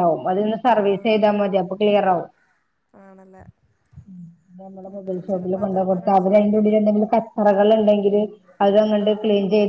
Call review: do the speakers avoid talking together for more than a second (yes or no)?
no